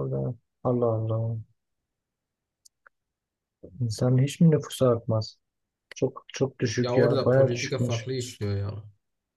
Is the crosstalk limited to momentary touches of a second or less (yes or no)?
no